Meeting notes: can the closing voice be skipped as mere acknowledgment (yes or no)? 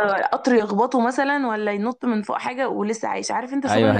no